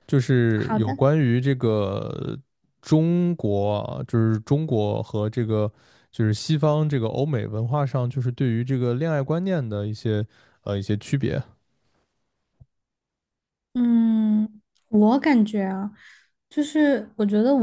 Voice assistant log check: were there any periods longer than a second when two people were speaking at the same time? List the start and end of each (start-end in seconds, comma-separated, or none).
none